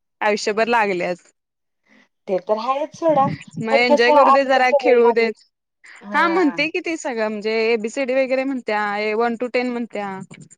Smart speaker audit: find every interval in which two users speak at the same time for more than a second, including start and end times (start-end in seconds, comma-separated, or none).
3.7-5.3